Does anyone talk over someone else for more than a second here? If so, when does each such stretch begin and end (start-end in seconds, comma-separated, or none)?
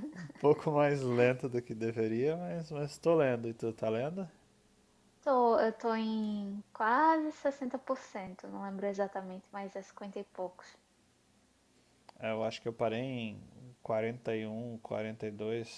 none